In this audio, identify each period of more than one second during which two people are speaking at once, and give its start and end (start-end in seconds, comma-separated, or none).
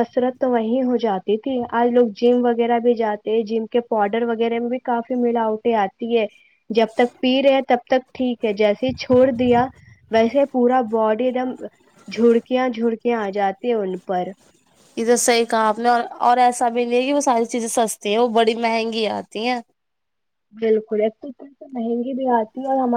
none